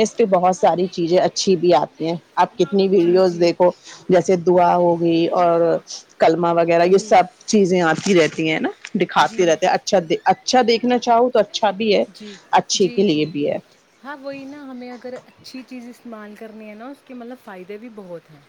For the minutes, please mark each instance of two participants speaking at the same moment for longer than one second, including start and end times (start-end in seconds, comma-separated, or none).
none